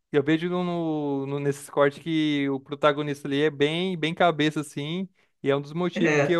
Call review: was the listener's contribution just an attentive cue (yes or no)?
yes